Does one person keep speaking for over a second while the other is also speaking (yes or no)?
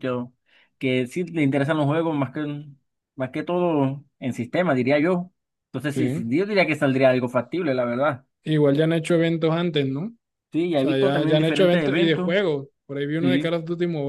yes